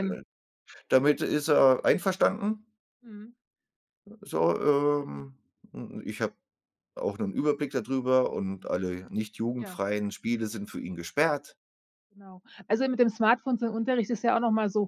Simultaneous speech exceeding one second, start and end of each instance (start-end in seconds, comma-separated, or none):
none